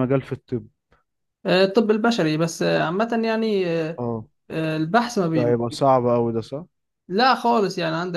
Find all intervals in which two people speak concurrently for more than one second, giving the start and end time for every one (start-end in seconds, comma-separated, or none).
none